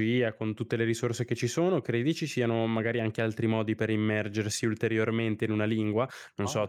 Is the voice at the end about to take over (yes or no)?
no